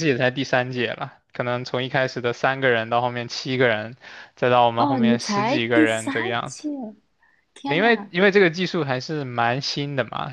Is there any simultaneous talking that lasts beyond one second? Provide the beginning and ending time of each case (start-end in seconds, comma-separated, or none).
4.8-6.7